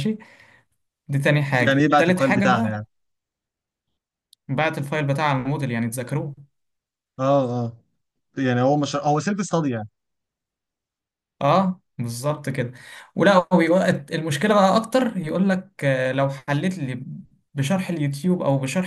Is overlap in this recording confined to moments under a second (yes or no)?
no